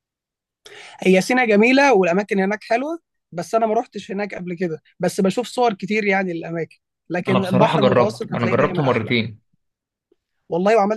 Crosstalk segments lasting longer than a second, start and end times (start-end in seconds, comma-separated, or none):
7.3-9.2